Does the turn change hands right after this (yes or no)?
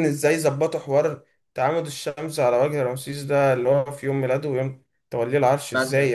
yes